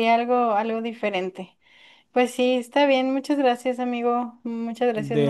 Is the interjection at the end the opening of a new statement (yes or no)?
yes